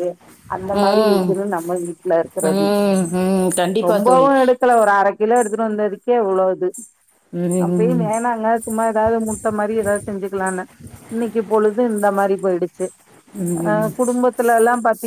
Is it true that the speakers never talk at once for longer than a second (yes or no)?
yes